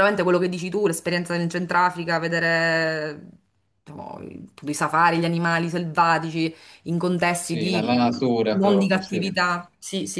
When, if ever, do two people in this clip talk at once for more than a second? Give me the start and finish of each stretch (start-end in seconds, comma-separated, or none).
7.4-9.2